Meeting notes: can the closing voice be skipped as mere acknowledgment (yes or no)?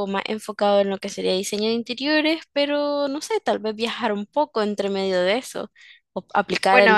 no